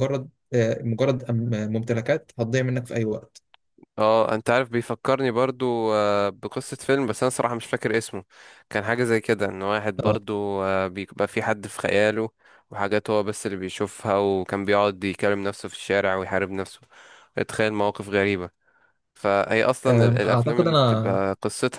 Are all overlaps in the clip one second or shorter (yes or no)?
no